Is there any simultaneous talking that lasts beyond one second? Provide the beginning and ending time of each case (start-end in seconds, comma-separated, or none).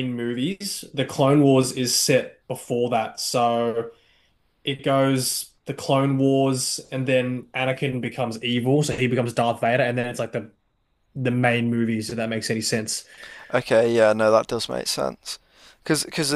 none